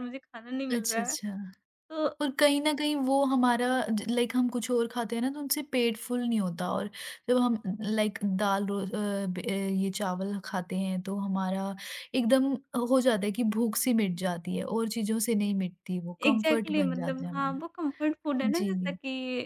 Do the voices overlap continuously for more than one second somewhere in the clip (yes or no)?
yes